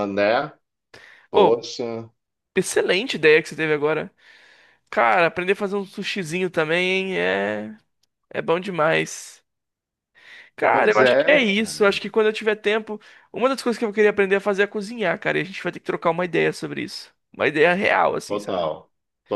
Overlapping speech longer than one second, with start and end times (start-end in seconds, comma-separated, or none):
10.7-12.0